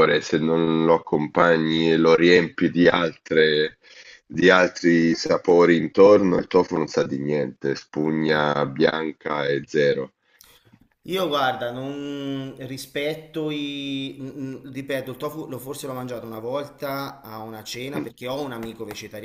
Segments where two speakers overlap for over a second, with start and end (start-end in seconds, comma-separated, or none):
none